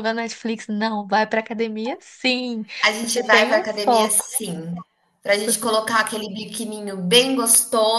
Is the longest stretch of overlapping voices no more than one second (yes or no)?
no